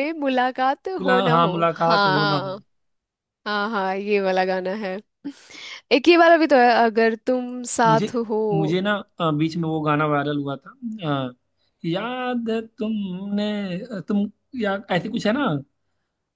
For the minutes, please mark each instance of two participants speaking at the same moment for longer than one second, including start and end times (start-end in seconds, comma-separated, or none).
1.0-2.6